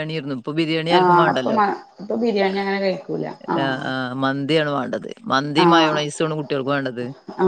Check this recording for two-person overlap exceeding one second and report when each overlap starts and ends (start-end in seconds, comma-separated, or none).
none